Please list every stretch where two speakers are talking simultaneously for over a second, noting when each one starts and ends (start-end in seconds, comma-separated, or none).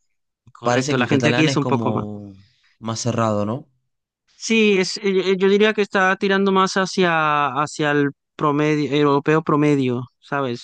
0.6-2.0